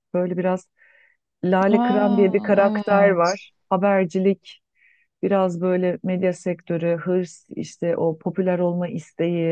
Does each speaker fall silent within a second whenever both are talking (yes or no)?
no